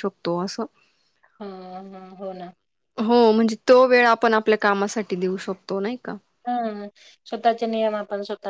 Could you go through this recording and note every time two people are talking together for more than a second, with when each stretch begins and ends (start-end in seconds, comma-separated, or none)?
none